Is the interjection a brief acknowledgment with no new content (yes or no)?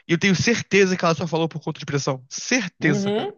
no